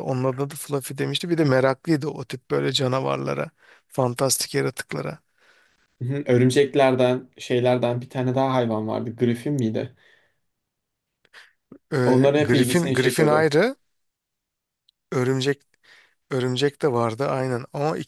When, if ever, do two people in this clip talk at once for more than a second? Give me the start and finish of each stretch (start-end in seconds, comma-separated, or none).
12.1-13.5